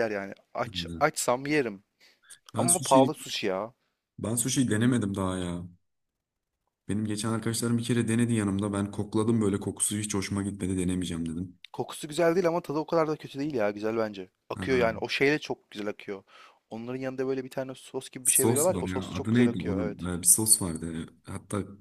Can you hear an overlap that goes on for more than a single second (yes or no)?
yes